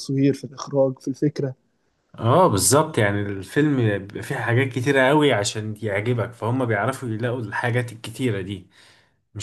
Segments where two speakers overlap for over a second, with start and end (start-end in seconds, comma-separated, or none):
none